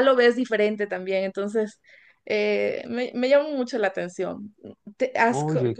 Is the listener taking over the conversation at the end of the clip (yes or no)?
no